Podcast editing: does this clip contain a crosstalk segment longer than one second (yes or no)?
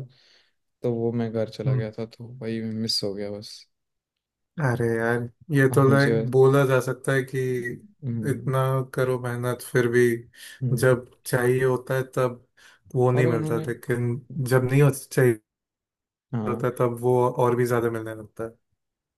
no